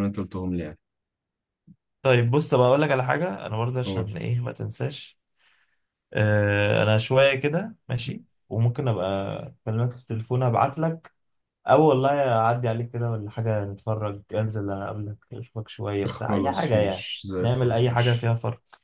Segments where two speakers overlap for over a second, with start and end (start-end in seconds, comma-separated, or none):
16.1-18.3